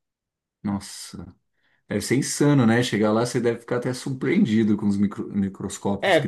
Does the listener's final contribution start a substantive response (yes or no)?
yes